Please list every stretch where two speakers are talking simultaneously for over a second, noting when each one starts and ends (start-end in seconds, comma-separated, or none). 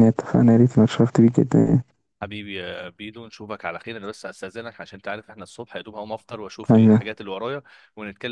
none